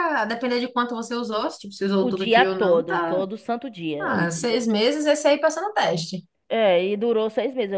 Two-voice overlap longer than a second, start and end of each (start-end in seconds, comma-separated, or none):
2.0-3.2